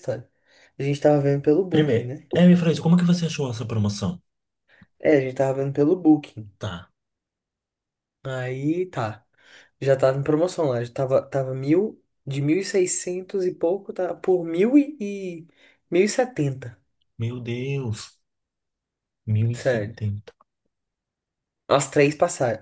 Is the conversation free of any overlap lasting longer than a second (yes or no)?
yes